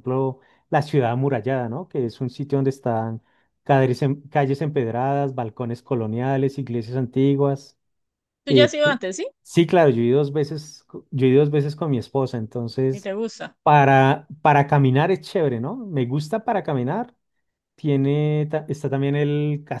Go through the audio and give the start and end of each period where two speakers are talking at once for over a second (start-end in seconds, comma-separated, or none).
none